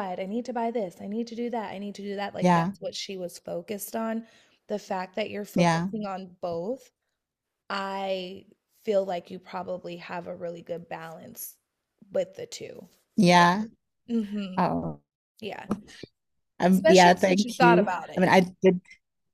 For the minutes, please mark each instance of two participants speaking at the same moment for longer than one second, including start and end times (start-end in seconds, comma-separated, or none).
16.7-18.3